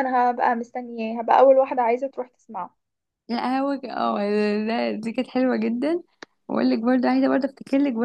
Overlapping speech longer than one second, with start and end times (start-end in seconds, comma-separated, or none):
none